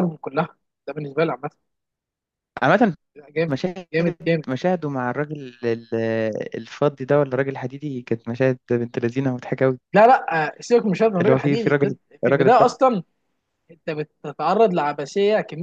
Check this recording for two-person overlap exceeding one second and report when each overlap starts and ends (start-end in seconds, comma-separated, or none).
11.2-12.8